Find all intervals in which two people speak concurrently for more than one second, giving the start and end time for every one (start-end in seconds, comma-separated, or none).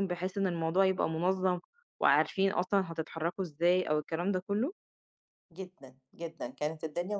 none